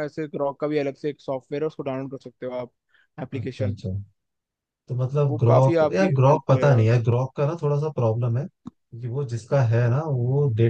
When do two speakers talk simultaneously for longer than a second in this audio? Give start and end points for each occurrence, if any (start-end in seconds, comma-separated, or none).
5.3-6.9